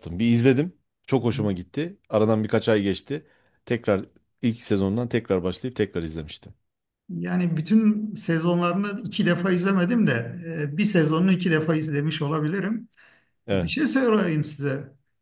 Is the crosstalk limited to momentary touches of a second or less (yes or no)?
yes